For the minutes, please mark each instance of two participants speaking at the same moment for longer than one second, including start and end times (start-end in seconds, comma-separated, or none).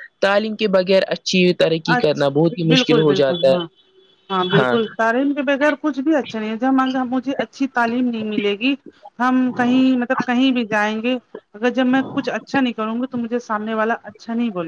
2.0-3.7